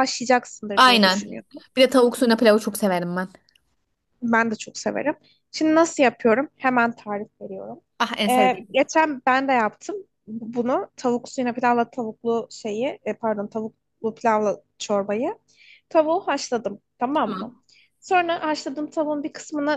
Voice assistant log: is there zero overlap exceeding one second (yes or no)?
yes